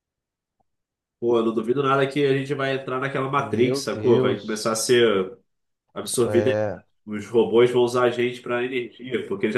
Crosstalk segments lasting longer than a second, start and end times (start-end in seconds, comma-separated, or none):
3.3-4.9